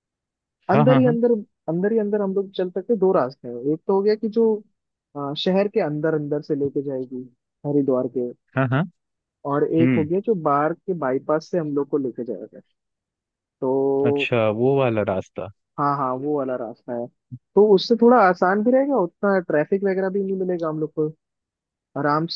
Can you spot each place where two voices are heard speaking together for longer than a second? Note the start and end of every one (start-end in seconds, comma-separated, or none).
none